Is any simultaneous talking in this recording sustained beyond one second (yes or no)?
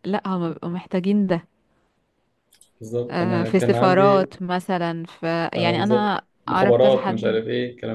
yes